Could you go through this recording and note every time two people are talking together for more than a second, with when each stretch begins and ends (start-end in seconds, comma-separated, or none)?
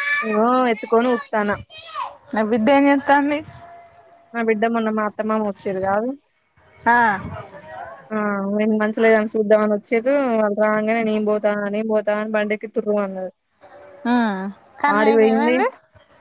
none